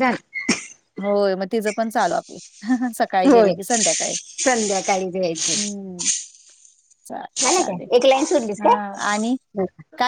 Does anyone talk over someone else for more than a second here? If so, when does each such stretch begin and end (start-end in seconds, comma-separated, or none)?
none